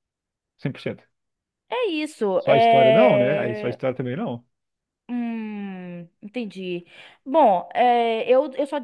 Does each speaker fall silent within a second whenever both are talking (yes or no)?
no